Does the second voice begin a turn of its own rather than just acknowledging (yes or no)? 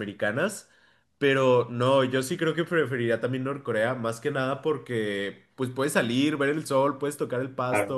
no